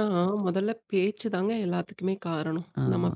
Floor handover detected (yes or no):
no